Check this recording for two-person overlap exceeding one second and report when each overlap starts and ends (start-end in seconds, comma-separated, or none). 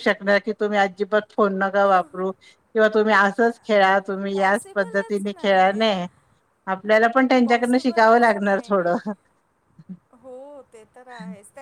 4.3-6.1, 7.4-8.9